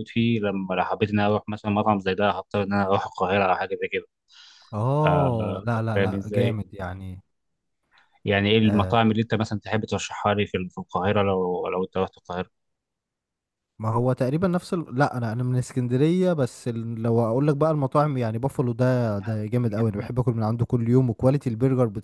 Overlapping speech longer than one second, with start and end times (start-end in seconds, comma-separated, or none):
5.0-6.6